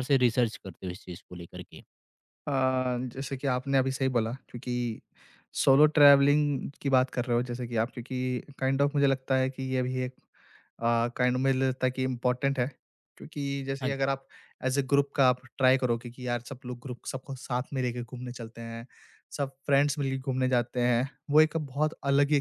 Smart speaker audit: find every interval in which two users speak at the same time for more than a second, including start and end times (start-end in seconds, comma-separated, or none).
none